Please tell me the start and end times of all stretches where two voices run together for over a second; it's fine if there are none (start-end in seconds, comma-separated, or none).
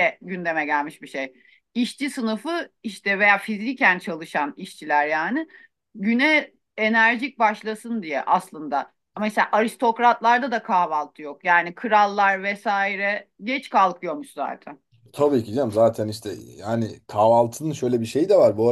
none